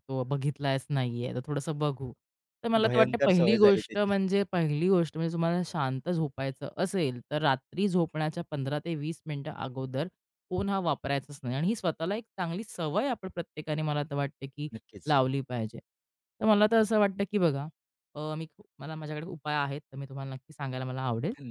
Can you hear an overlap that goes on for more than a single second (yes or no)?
yes